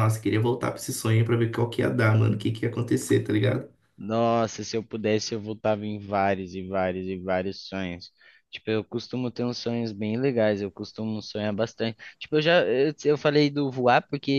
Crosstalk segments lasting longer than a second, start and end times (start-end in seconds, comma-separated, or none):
none